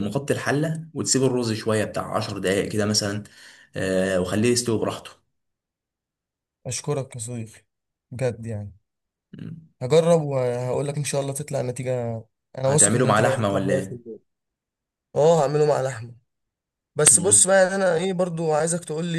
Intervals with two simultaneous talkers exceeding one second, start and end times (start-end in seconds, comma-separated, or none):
12.7-14.0